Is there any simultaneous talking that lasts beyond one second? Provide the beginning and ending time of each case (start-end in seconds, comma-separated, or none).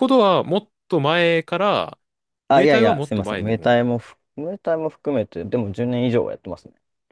2.5-3.8